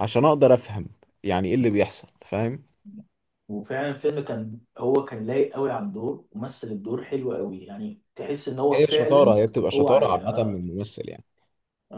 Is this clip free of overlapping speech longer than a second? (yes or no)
no